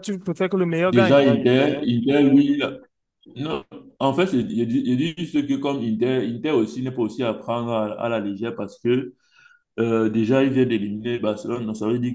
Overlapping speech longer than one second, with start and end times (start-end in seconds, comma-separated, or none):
0.8-2.6